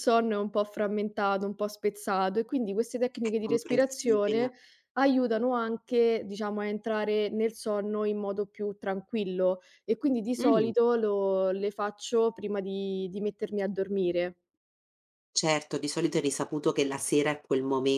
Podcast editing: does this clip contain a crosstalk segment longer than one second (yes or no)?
yes